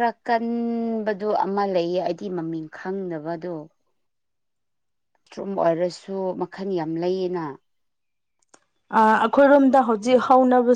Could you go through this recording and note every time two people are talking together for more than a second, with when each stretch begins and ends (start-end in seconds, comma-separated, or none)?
none